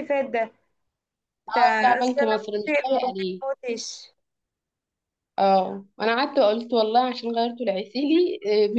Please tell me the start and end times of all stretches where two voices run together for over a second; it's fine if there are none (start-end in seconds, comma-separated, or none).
1.5-3.3